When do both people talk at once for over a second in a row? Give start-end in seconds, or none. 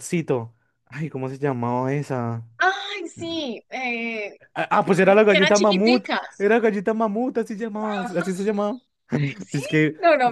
4.9-6.5